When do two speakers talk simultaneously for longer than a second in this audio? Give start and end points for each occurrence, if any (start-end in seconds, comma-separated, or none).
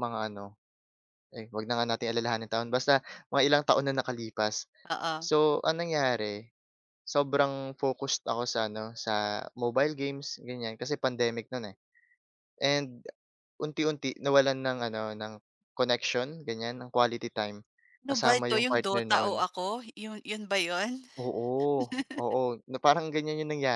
18.1-19.4